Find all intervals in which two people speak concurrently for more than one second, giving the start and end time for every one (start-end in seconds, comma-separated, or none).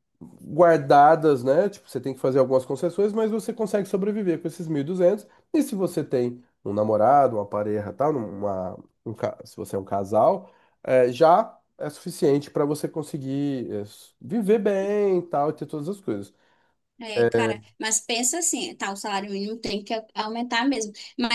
none